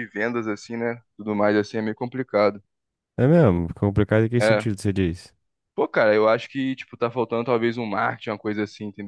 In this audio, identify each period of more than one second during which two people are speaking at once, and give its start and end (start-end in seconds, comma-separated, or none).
none